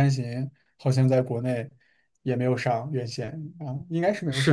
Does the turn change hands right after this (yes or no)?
yes